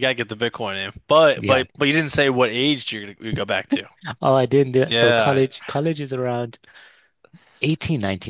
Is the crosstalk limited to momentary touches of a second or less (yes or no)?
yes